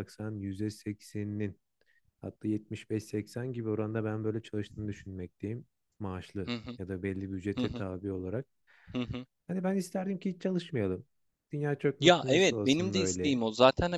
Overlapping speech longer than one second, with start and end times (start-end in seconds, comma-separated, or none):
12.0-13.4